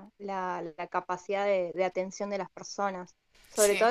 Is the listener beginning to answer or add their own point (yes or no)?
no